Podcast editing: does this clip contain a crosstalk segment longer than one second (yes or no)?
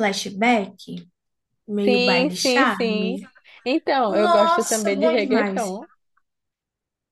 yes